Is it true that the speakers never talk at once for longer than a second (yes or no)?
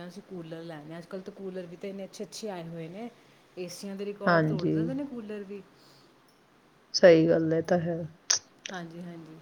yes